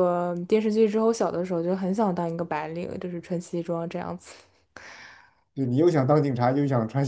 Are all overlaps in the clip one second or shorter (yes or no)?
yes